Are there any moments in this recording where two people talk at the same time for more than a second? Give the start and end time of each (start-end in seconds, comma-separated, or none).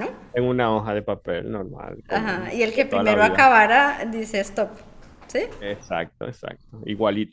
2.1-3.5